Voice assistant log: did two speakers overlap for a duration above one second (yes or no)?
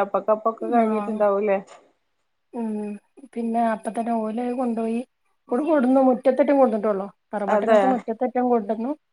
no